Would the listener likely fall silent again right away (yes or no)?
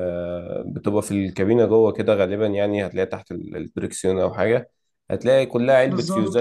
yes